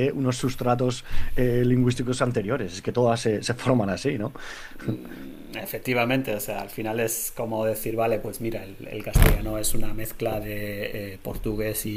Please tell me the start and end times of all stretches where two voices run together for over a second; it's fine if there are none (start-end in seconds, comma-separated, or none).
none